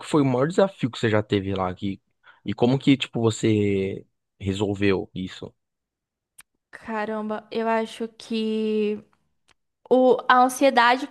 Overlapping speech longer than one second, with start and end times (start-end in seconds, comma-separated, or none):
none